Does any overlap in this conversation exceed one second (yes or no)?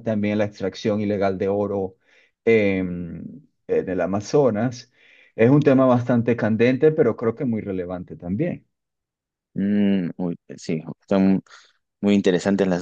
no